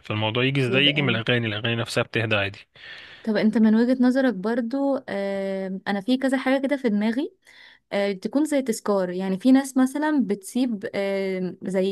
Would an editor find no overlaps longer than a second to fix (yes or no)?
yes